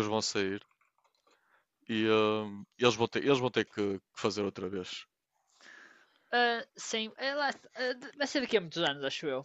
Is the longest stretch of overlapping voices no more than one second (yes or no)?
yes